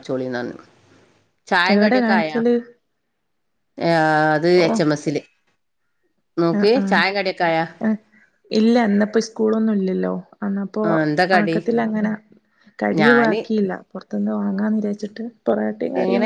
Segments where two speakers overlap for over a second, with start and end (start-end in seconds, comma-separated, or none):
none